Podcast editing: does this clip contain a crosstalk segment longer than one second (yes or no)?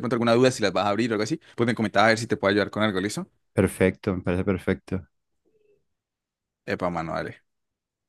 no